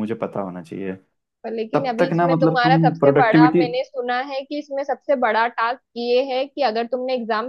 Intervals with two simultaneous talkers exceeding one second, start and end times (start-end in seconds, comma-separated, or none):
1.7-3.6